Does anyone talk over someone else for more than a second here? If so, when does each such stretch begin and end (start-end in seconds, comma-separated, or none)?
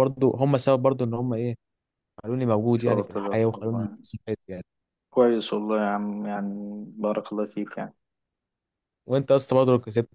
2.7-4.0